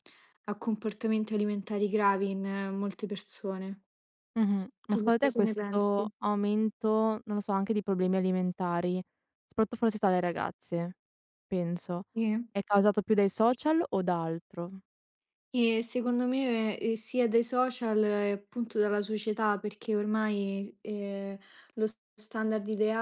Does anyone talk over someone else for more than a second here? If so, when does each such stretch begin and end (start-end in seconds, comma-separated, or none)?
4.9-6.1